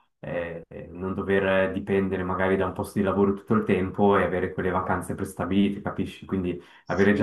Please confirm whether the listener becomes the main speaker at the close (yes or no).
no